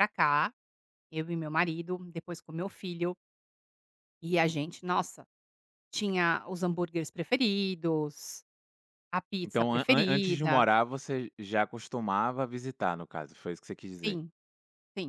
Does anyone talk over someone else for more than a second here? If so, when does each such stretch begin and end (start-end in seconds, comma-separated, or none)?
9.4-10.7